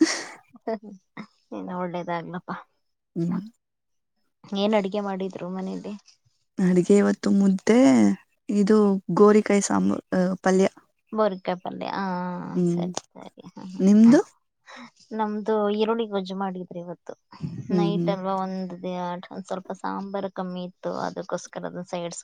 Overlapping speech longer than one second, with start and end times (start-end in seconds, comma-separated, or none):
none